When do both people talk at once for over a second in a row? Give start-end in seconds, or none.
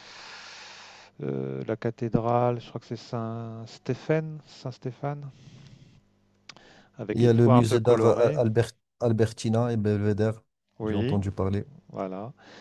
7.1-8.4